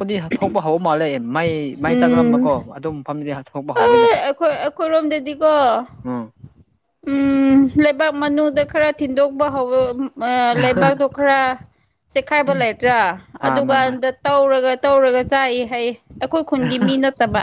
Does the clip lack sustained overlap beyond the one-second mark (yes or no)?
yes